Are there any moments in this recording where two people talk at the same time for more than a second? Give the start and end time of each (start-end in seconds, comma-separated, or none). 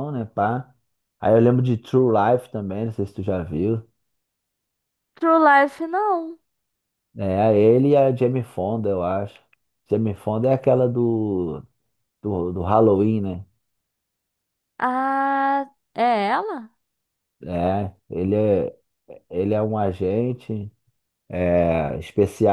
none